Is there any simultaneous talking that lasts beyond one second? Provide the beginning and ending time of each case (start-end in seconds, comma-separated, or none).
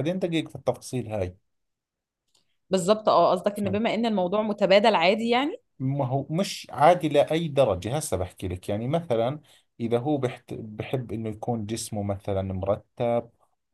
none